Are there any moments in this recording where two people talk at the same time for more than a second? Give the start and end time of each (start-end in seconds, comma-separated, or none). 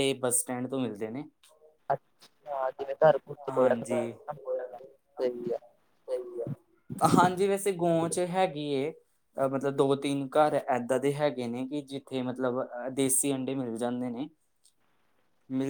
none